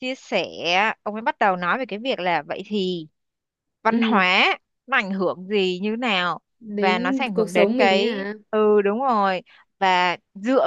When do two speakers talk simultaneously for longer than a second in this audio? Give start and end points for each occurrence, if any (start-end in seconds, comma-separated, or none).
6.6-8.1